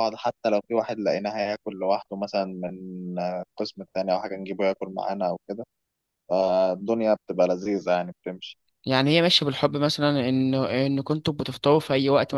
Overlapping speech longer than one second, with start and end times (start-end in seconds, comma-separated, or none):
none